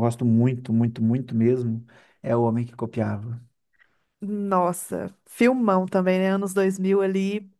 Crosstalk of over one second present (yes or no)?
no